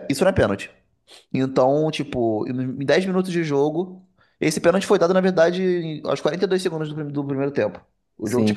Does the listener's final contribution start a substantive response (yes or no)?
yes